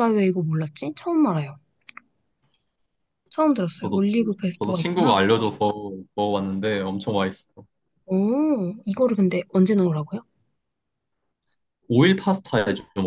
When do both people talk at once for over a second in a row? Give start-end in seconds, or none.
3.8-5.1